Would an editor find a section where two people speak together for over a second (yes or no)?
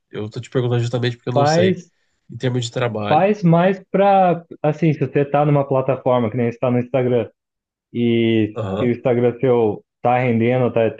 no